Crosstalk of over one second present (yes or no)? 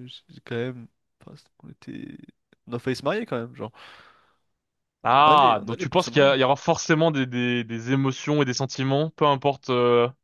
yes